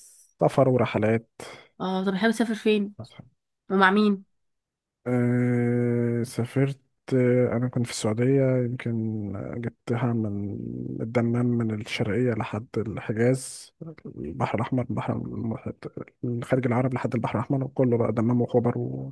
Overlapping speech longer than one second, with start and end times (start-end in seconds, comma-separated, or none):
none